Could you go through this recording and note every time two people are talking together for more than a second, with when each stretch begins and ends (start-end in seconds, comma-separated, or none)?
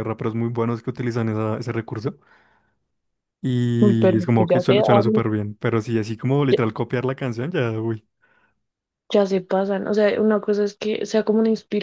3.8-5.2